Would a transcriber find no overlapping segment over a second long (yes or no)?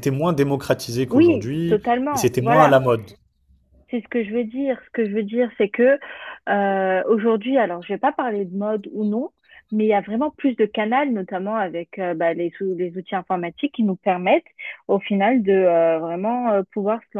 no